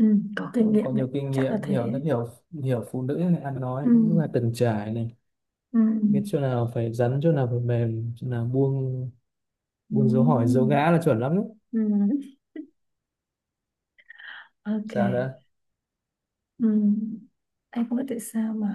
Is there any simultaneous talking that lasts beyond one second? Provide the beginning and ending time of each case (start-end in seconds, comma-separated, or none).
0.6-2.0